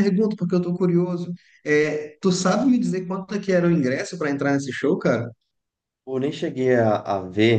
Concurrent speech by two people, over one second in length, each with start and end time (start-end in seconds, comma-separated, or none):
none